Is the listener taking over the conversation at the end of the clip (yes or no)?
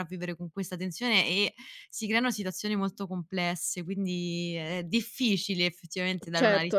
yes